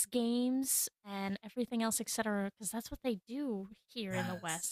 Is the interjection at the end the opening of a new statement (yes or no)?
yes